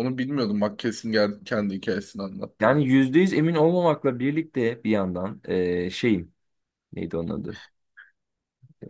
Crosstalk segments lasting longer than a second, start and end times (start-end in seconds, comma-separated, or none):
none